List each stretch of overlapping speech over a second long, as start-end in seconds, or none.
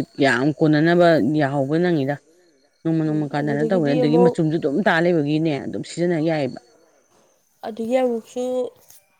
3.0-4.3